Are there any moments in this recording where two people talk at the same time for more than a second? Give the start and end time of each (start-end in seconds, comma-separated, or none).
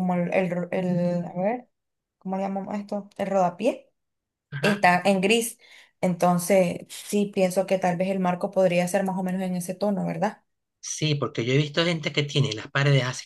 none